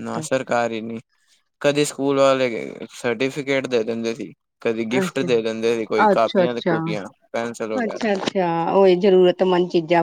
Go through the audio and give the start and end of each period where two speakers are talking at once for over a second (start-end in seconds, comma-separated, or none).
5.0-6.5